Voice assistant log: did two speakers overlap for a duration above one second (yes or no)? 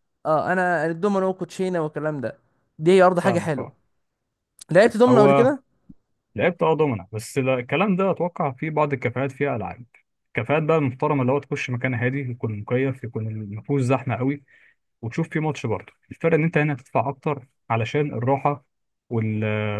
no